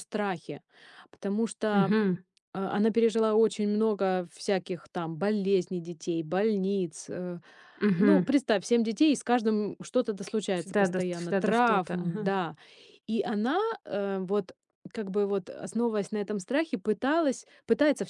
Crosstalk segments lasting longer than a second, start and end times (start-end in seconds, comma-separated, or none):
10.5-12.3